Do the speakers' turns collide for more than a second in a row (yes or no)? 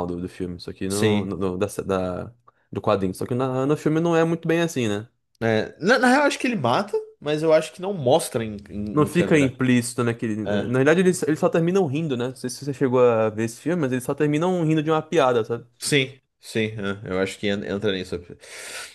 no